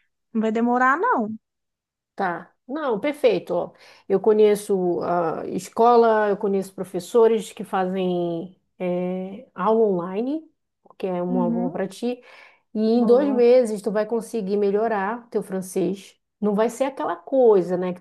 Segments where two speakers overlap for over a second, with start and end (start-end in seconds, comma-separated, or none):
none